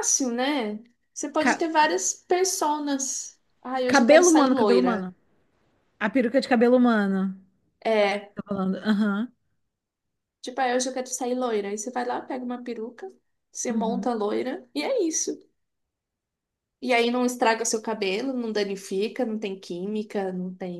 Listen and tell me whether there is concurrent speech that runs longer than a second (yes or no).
yes